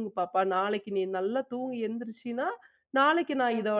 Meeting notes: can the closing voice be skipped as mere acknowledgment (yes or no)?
yes